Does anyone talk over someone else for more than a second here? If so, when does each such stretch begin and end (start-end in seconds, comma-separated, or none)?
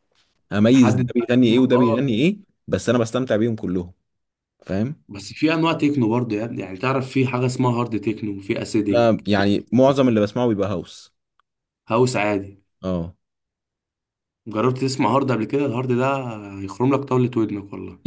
0.7-2.1